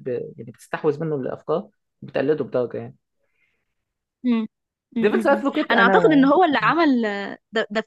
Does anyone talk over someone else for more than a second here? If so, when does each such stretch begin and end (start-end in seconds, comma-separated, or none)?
5.0-6.3